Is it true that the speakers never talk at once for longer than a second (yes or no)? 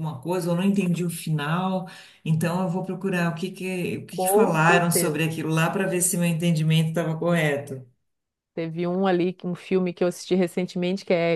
no